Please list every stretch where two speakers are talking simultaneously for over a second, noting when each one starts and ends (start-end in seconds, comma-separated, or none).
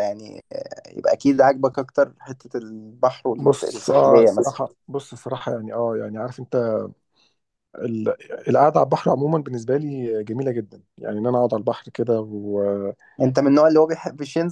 3.4-4.6